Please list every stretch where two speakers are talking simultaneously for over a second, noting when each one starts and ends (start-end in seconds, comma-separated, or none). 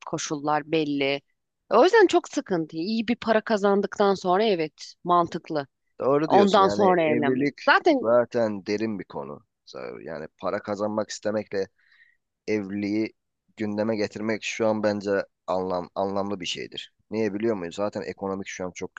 6.2-7.6